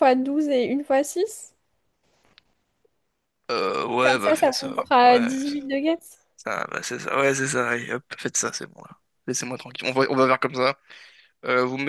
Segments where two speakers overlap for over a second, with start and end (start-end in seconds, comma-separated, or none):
4.0-5.6